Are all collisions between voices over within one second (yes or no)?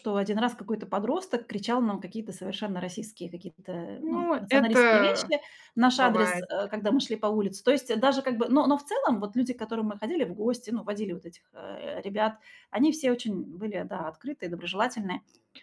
no